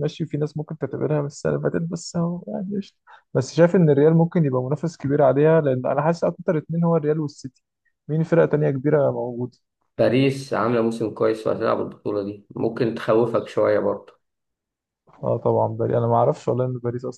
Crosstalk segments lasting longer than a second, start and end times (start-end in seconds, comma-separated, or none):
none